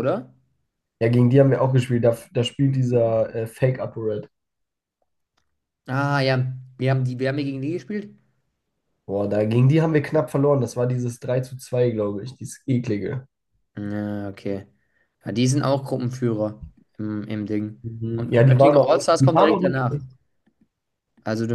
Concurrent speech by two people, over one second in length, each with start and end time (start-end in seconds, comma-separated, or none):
17.8-20.0